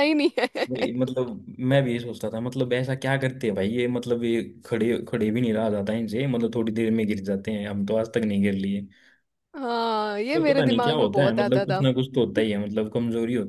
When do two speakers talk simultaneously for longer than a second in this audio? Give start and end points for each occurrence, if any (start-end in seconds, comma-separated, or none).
10.3-11.8